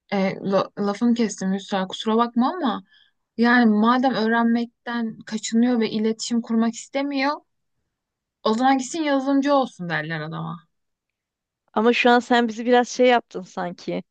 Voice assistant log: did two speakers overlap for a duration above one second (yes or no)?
no